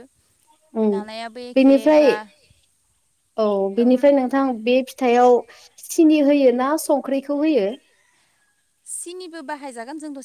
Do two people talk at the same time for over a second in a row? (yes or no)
no